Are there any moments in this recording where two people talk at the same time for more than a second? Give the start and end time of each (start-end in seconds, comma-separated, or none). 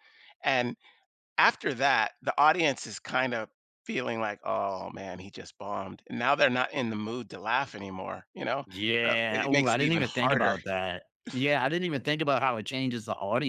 9.1-10.6